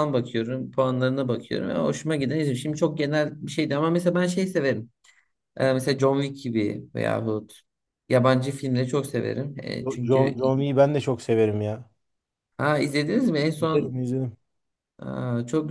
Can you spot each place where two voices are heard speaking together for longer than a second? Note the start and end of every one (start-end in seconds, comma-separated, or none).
none